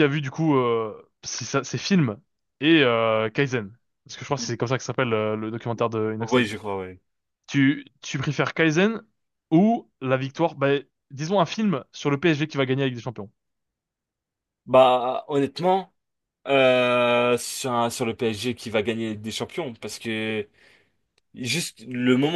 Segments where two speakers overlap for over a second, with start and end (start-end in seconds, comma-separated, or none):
none